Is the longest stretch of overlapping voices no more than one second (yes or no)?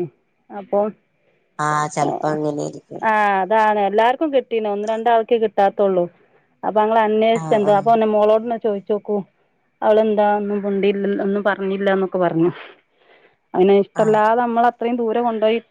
yes